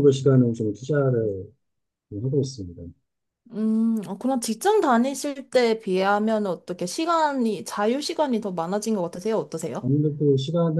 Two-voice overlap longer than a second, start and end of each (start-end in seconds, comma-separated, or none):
none